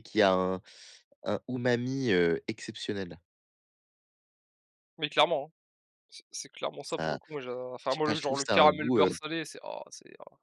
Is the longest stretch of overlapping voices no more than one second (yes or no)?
no